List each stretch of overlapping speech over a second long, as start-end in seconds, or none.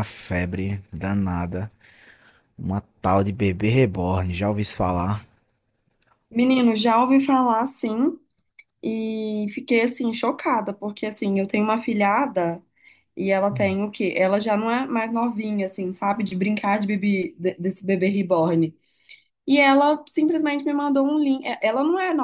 none